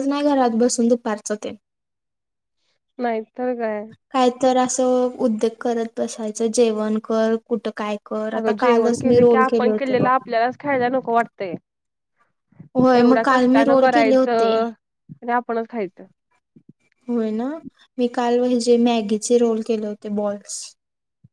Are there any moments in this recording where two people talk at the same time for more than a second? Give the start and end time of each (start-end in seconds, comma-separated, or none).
8.4-10.1, 13.0-14.5